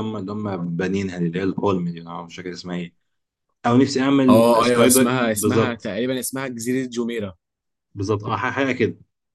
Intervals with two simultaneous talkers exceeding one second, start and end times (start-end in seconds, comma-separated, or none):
4.3-5.9